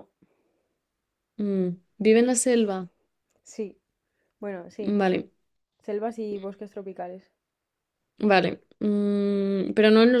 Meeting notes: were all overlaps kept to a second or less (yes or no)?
yes